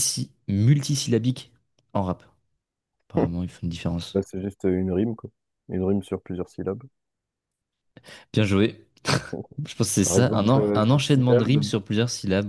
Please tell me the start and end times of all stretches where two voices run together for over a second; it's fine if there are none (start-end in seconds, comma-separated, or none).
10.0-11.7